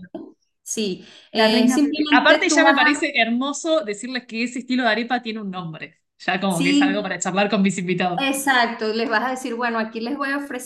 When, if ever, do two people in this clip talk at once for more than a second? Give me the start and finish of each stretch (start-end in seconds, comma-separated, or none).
1.3-3.0